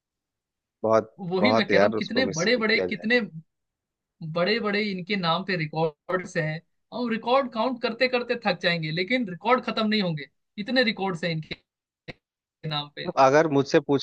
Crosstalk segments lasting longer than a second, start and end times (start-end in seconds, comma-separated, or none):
1.3-3.2